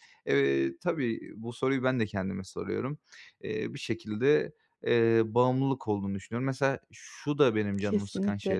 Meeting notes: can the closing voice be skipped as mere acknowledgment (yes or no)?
yes